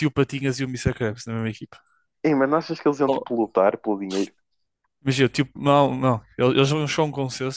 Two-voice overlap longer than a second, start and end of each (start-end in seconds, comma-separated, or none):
none